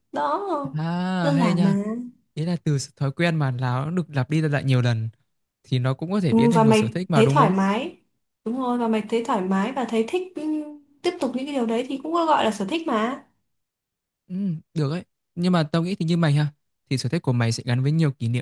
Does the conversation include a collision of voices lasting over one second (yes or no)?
yes